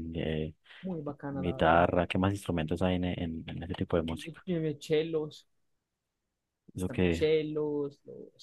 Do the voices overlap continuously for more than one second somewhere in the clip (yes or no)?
no